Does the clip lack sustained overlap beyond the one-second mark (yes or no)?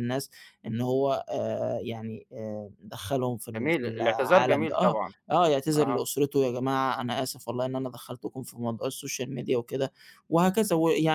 no